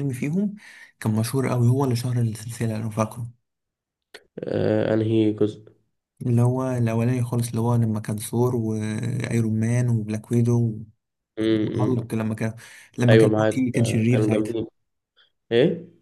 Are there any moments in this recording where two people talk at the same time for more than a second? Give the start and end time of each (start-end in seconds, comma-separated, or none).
13.1-14.6